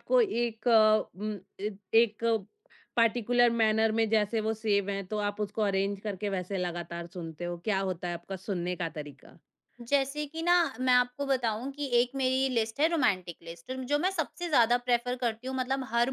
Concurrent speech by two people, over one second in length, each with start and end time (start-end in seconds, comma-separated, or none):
none